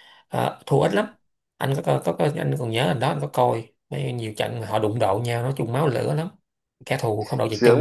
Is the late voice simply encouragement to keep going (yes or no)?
no